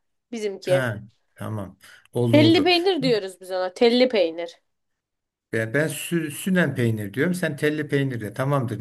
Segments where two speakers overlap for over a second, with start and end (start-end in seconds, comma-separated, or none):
none